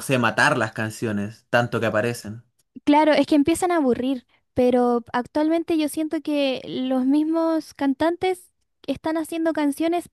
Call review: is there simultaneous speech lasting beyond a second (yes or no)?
no